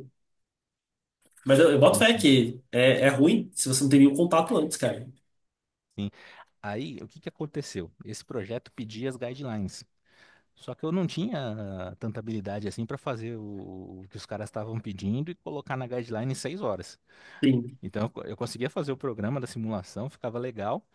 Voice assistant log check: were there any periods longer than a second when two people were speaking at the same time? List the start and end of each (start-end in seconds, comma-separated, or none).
none